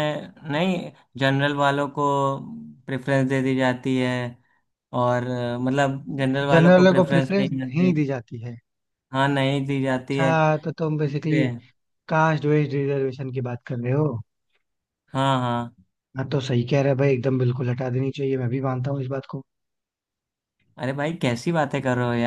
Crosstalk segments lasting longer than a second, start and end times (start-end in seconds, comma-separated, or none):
6.5-7.9